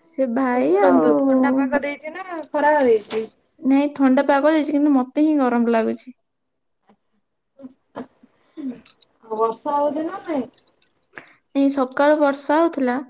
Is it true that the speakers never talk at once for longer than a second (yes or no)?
yes